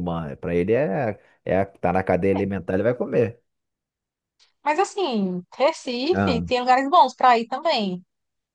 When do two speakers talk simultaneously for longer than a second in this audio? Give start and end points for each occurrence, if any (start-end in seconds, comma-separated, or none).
none